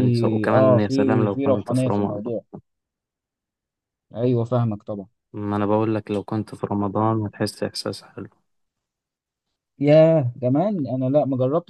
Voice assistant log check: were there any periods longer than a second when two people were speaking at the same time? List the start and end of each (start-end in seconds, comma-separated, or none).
0.5-2.2